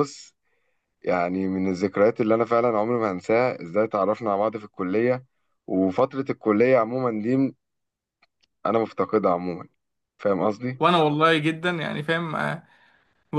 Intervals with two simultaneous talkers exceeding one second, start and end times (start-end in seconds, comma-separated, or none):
none